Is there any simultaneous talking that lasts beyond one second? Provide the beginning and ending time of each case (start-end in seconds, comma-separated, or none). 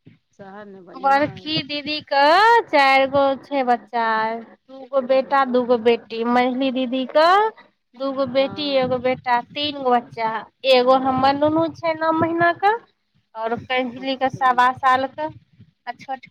none